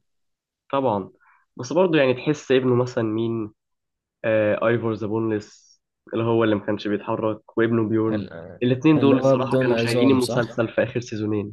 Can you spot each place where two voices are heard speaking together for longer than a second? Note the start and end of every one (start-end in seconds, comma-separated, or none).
9.0-10.7